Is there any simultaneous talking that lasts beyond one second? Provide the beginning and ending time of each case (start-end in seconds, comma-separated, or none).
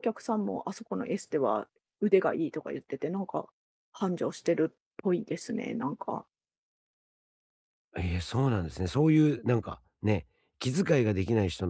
none